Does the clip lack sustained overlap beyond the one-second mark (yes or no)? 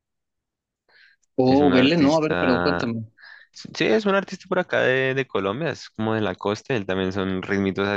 no